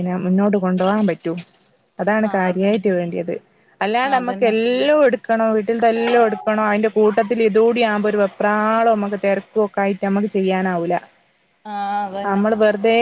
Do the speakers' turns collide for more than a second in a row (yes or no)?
no